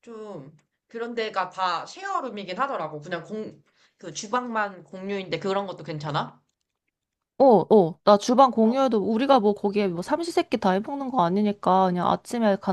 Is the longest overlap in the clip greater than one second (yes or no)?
no